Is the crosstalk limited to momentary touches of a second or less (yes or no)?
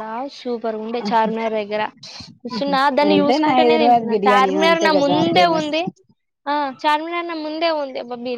no